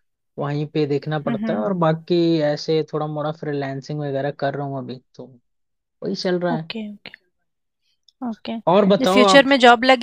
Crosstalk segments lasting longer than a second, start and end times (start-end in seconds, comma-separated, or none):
none